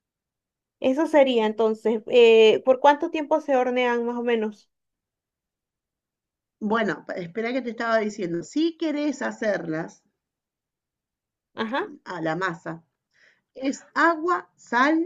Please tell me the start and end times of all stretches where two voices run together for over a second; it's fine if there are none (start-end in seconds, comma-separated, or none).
none